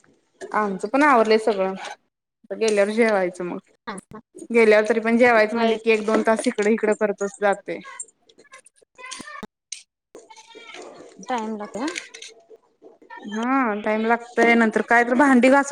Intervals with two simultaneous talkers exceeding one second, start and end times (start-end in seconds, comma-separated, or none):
none